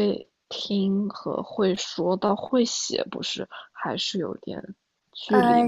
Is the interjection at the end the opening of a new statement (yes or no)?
yes